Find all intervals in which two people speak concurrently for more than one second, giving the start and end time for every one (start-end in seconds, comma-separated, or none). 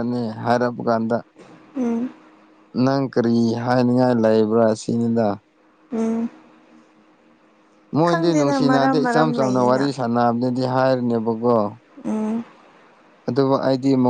8.1-9.9